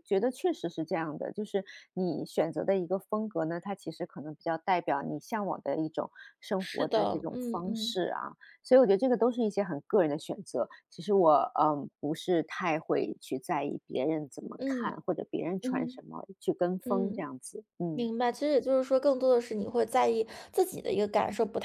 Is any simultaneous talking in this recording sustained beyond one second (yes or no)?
yes